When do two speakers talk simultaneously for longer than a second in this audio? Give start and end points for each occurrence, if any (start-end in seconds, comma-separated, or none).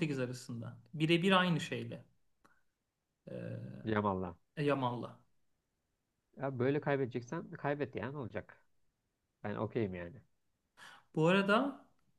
none